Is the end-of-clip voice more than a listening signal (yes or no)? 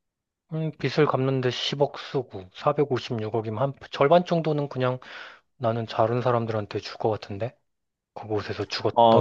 yes